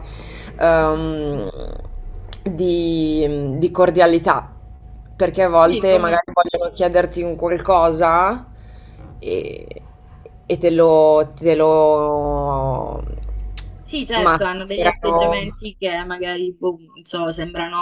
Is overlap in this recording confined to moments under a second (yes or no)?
no